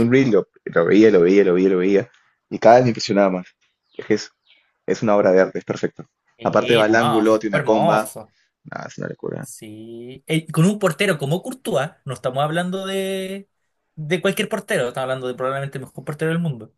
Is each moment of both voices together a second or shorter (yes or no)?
no